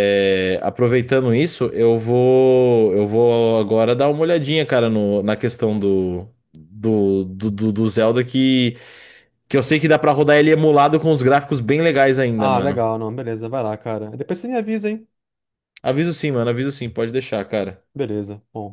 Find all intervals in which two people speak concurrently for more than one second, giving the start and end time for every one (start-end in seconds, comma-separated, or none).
none